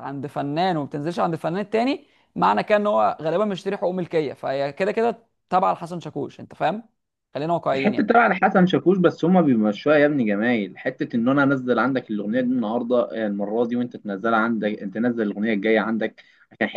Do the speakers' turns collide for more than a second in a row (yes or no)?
no